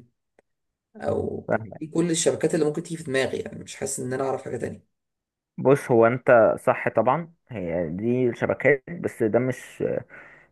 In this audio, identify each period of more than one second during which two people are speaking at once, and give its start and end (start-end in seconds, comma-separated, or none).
none